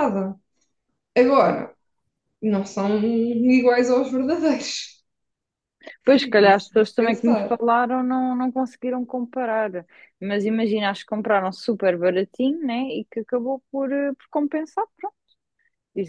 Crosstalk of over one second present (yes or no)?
yes